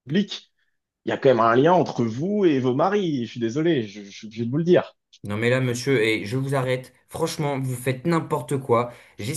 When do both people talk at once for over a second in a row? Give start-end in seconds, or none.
none